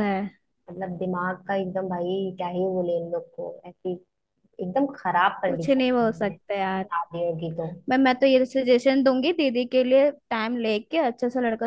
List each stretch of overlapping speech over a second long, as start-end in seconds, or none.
5.5-6.9